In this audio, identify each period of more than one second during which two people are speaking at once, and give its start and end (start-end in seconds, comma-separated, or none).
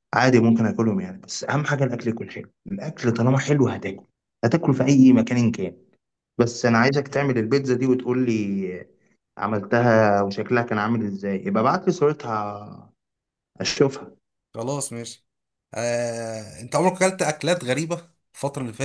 none